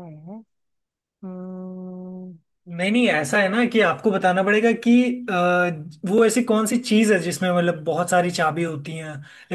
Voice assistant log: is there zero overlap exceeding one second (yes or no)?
yes